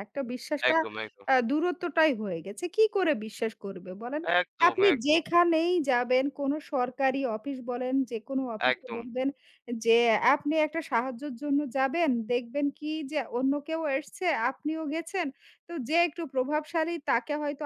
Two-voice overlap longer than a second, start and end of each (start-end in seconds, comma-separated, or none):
none